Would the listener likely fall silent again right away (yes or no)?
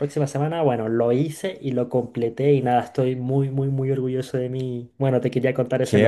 no